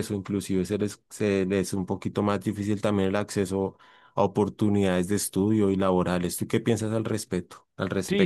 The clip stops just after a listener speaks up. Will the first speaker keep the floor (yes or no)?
no